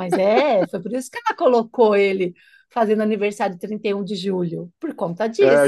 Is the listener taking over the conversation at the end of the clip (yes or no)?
yes